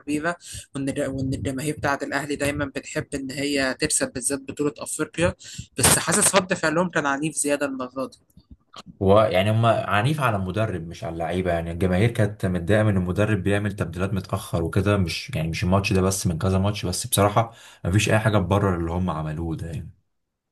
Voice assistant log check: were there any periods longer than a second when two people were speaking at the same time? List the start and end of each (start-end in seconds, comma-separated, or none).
none